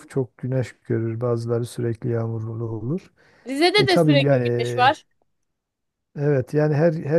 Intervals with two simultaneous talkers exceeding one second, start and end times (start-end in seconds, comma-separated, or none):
3.8-5.0